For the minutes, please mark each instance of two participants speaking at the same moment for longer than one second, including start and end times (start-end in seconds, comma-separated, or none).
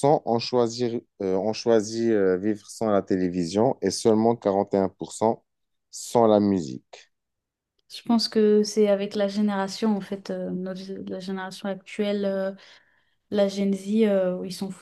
none